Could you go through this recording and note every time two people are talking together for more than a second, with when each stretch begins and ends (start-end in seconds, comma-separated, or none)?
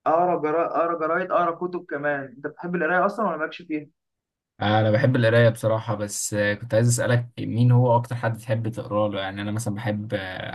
none